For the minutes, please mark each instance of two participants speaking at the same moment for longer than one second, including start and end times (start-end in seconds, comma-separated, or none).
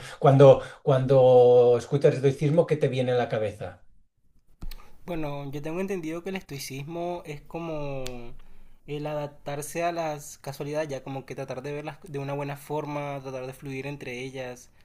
none